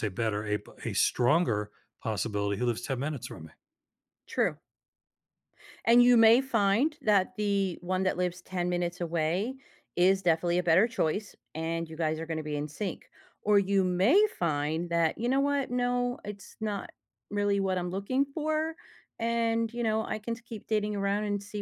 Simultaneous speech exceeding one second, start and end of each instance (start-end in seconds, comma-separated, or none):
none